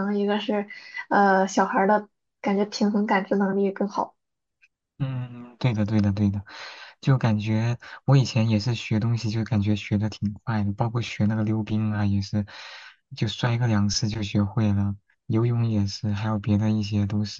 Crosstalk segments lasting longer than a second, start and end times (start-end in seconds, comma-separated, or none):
none